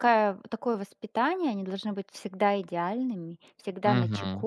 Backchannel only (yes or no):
yes